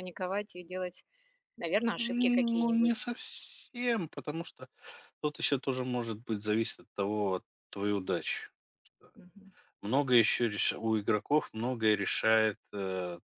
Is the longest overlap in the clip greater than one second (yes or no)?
yes